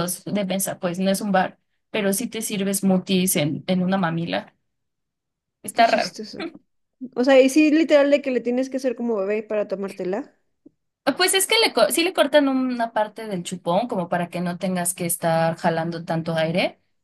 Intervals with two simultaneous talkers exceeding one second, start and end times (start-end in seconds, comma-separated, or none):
none